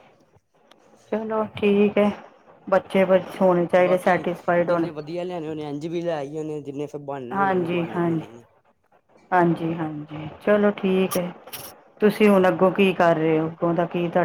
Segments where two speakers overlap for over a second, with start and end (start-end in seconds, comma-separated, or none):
none